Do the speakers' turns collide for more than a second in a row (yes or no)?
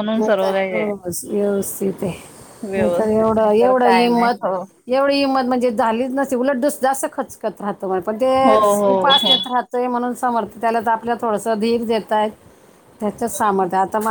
yes